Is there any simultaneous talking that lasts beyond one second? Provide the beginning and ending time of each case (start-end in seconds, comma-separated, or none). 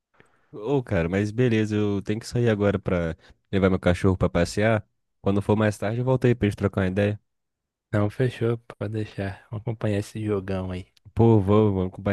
none